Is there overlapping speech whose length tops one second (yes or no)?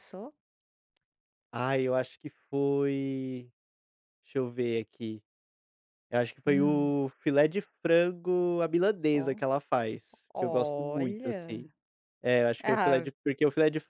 yes